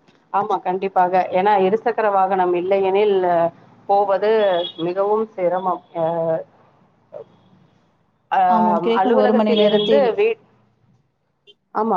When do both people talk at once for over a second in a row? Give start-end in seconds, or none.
8.5-10.1